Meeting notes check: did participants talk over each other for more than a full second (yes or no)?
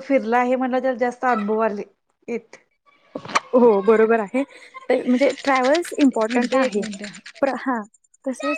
no